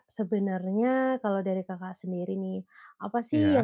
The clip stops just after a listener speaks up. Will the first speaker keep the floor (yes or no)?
yes